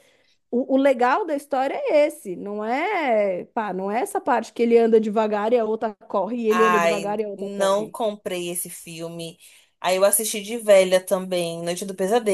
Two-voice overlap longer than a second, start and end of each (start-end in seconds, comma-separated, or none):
6.5-8.0